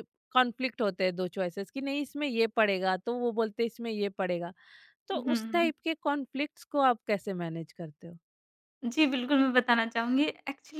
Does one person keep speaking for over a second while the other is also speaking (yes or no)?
no